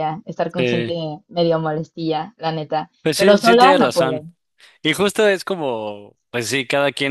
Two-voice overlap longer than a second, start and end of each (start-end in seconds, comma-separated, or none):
3.0-4.2